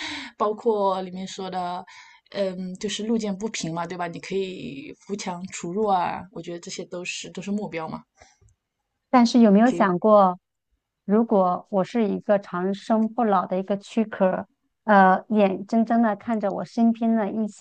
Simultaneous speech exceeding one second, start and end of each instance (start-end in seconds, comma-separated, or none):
none